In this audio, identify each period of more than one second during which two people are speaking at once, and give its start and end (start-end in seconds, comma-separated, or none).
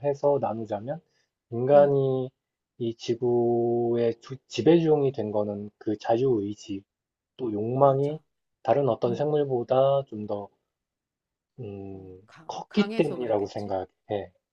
11.9-13.7